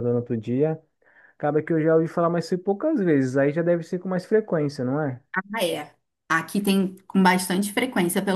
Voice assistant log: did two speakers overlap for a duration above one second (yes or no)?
no